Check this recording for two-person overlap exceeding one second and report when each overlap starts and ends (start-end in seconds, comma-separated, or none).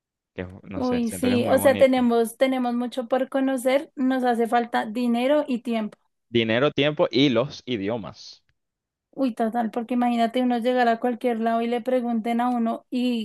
0.7-2.0